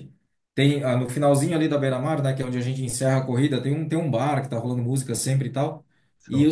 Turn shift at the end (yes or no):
no